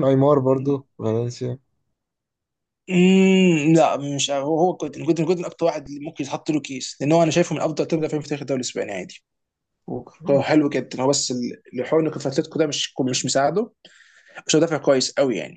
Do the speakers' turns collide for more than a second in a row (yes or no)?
no